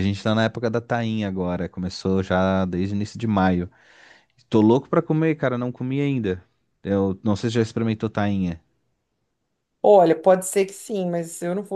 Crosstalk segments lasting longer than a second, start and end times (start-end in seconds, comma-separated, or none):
none